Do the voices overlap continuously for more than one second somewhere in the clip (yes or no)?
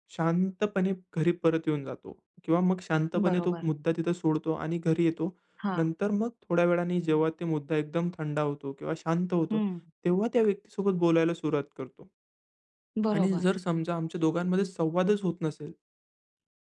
no